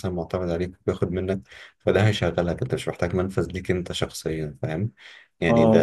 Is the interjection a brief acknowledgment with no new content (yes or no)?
no